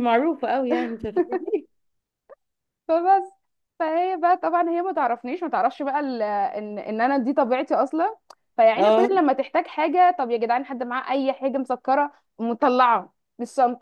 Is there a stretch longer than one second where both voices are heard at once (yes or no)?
no